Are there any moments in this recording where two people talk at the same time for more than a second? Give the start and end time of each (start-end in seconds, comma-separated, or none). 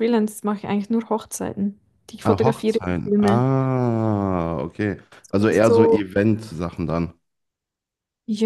2.2-3.5